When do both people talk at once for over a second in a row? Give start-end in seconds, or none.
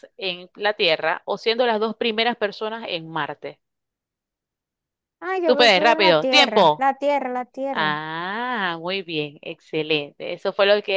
5.4-6.9